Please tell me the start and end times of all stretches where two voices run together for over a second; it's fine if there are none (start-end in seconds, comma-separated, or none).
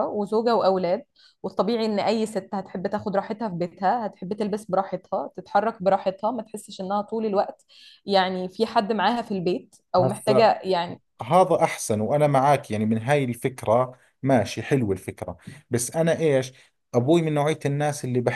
none